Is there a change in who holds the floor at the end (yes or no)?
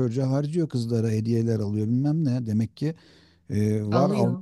no